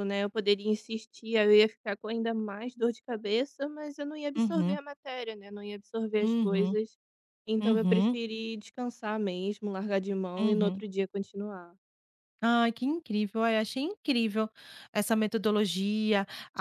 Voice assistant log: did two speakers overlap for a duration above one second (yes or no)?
no